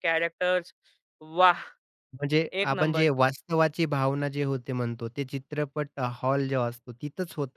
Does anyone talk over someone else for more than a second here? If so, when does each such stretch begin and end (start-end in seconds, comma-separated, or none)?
none